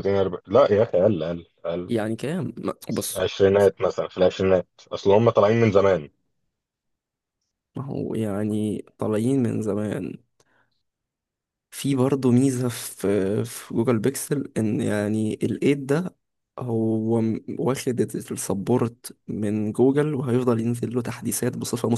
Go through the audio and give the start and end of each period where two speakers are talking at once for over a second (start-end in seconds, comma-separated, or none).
none